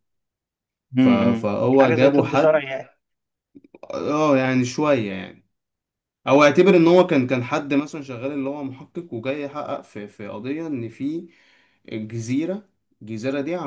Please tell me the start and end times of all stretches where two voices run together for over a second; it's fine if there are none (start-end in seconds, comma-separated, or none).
1.0-2.7